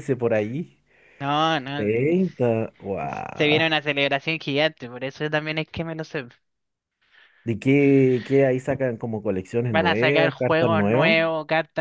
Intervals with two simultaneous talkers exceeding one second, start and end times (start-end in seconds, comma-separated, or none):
9.7-11.2